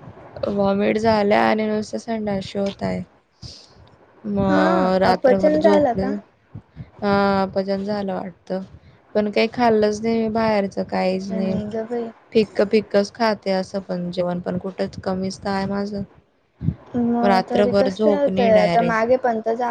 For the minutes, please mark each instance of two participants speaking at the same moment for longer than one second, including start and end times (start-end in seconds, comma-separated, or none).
4.5-6.1, 17.2-19.1